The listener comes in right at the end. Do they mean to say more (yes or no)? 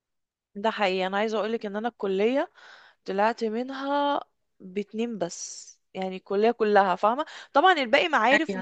no